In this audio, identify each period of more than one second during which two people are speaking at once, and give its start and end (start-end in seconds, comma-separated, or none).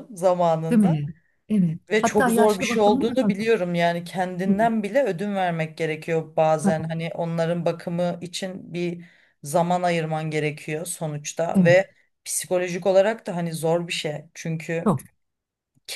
1.9-3.5